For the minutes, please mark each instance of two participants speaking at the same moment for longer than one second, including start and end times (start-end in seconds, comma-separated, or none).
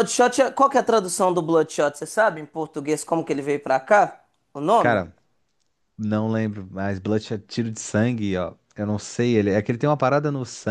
none